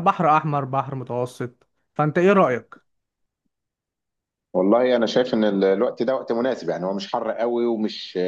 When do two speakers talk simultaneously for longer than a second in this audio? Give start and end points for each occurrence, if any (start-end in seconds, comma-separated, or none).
none